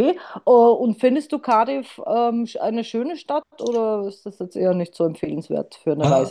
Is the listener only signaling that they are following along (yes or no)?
no